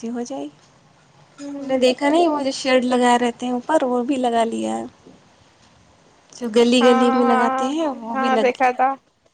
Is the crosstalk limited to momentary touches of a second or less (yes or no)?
no